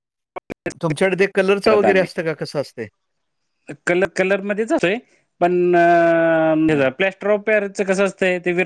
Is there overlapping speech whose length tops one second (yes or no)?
no